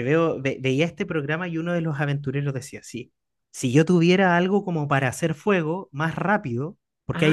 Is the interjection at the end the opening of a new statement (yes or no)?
no